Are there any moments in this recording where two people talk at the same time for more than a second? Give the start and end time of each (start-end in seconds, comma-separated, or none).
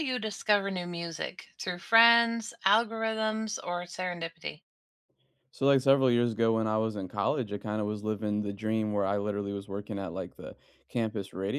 none